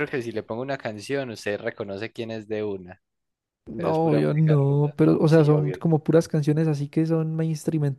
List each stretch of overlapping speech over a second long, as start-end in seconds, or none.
3.8-5.8